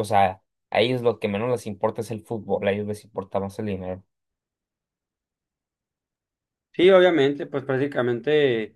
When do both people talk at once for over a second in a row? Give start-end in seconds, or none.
none